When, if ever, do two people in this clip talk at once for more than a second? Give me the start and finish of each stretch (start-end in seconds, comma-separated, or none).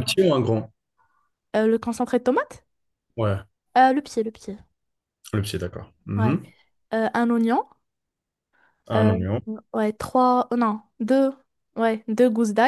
none